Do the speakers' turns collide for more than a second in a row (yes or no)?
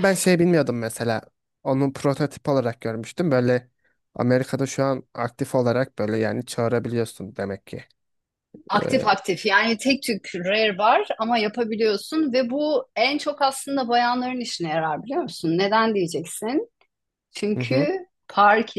no